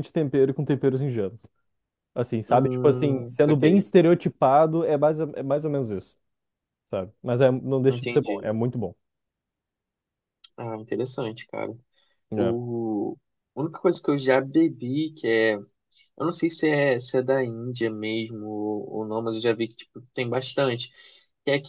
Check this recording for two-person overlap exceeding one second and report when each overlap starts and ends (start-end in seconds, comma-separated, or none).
2.5-3.9